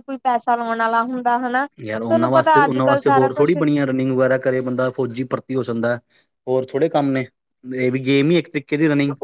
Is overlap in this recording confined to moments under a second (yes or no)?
no